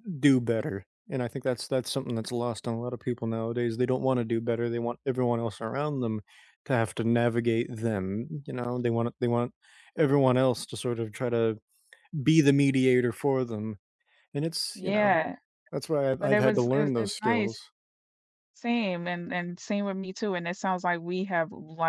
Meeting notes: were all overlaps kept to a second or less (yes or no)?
no